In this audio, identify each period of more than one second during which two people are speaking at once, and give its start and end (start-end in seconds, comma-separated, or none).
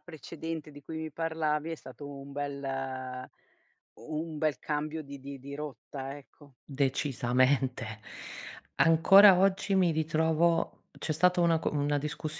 none